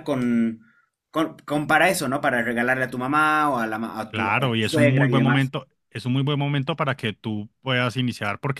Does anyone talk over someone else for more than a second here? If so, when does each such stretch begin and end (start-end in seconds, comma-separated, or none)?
4.1-5.5